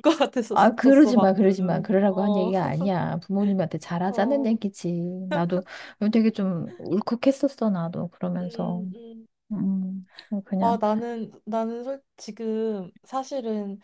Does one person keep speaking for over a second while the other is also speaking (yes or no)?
yes